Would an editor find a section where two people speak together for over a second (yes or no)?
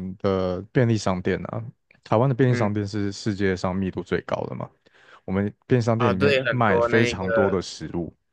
yes